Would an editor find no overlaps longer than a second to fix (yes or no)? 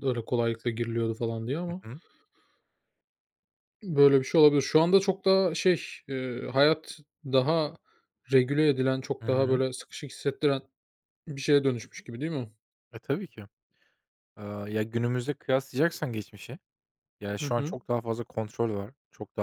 yes